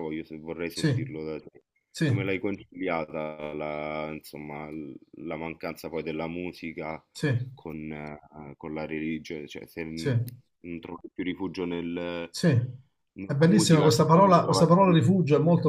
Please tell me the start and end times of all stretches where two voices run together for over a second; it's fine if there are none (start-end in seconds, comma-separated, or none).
13.2-15.2